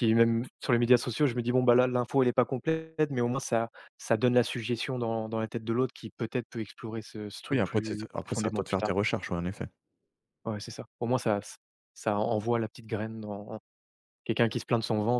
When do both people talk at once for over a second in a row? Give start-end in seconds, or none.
7.5-8.9